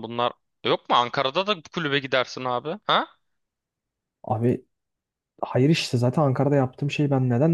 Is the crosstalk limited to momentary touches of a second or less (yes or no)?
yes